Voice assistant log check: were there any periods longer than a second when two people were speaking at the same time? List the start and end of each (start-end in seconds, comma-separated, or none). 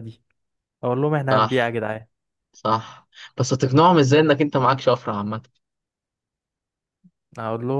none